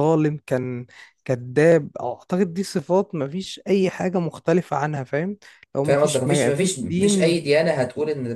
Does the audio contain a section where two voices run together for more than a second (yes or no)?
yes